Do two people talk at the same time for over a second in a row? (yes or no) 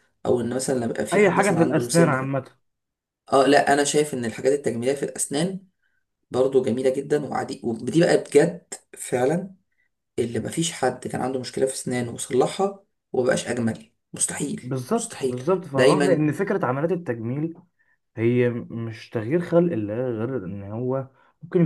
yes